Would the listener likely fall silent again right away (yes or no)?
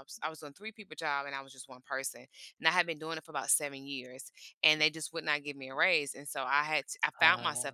yes